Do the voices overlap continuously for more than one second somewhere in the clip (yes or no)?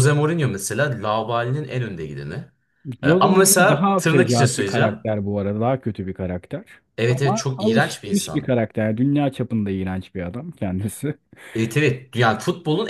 yes